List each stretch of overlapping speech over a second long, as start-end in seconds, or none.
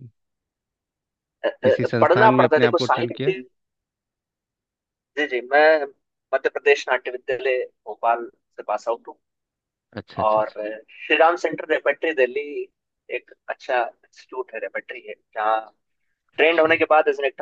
1.6-3.3